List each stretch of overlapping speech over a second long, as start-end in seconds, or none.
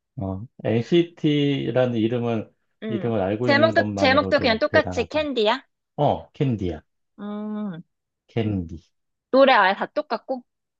2.9-5.3